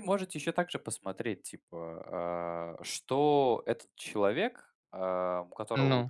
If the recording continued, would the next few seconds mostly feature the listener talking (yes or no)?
no